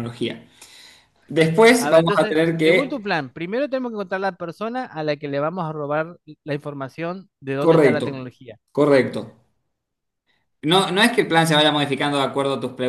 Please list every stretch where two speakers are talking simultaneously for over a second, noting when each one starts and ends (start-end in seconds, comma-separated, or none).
1.8-3.1